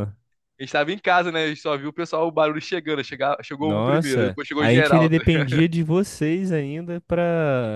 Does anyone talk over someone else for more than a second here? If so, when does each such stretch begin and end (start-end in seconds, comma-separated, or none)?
3.6-5.5